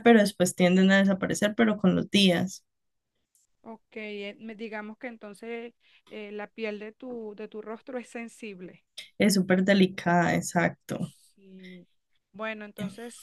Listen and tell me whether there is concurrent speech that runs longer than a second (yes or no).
no